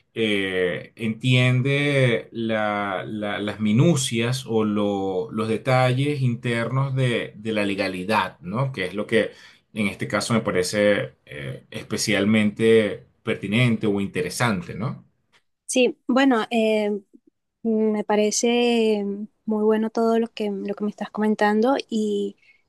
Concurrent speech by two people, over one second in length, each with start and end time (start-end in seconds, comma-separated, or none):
none